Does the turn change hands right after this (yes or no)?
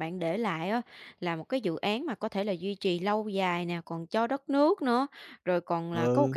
no